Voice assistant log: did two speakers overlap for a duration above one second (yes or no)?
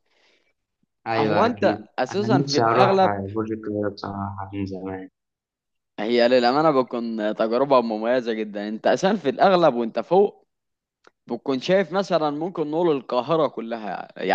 yes